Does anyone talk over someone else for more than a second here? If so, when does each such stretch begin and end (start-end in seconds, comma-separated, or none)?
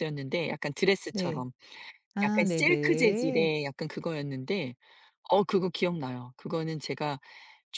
2.2-3.5